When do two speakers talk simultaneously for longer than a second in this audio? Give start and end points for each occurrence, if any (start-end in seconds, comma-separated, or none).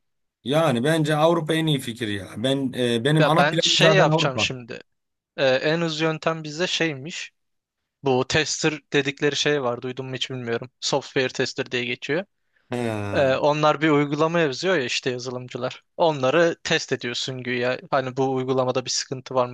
3.2-4.5